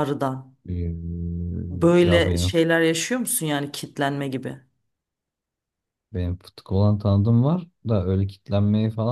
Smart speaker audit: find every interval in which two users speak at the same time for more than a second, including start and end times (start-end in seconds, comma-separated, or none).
none